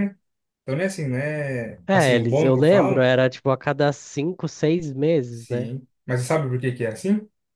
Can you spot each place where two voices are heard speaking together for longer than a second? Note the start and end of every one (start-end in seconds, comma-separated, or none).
1.9-3.1